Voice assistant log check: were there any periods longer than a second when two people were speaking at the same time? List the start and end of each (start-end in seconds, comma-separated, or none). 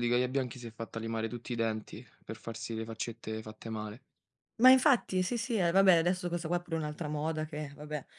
none